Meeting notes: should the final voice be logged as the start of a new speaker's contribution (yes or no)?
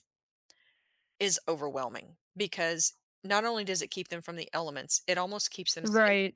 no